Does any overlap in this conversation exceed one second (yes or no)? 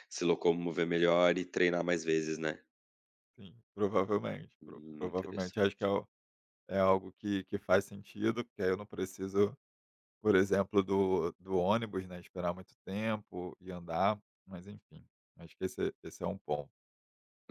yes